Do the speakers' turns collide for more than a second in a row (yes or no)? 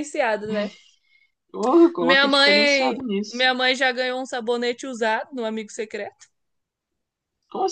yes